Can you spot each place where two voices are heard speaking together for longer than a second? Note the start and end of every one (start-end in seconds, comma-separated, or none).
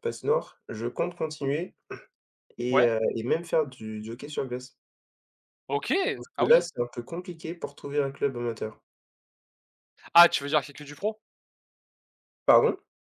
none